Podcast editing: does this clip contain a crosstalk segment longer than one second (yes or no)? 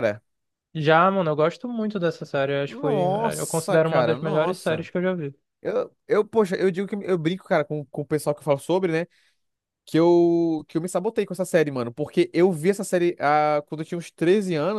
yes